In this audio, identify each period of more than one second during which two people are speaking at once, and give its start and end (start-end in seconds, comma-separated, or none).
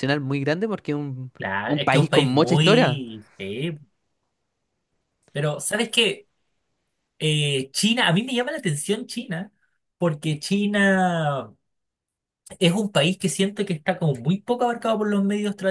1.4-3.0